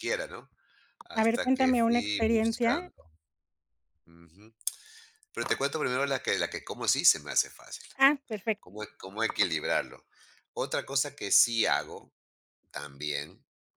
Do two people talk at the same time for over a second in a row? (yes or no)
yes